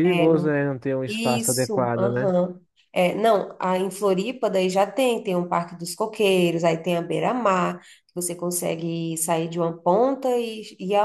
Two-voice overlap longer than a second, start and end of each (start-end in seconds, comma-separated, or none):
1.1-2.3